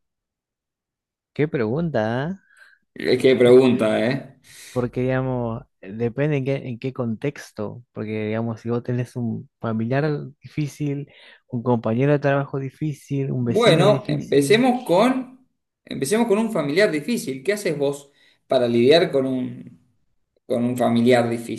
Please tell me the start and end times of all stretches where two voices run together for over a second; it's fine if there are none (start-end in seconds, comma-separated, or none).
13.4-14.7